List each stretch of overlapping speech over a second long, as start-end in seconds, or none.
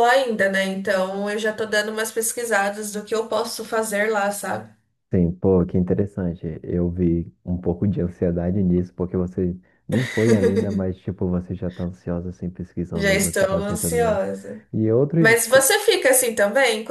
12.9-14.2